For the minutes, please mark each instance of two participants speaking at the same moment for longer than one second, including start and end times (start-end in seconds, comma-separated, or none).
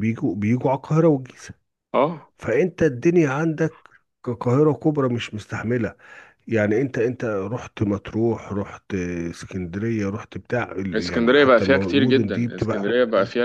10.9-12.8